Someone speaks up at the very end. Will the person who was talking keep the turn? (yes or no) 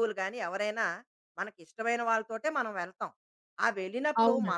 yes